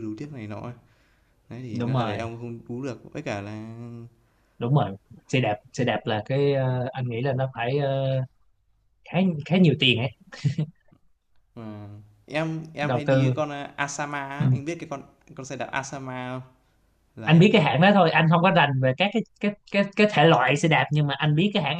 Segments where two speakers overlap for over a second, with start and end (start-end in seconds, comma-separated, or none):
none